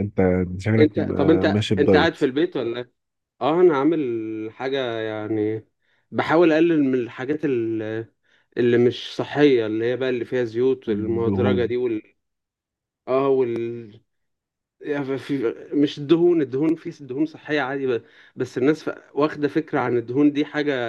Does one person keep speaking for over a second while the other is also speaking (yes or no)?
yes